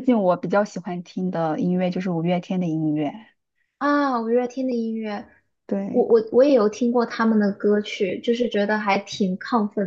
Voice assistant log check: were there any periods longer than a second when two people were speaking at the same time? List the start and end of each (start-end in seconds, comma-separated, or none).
none